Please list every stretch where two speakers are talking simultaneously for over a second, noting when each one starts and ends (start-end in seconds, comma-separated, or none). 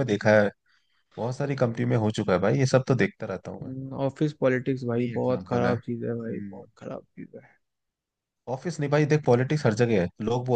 5.0-6.6